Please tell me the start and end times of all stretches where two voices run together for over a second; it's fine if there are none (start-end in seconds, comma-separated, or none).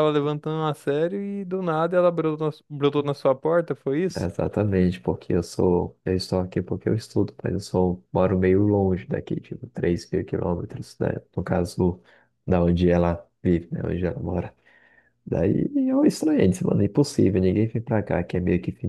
none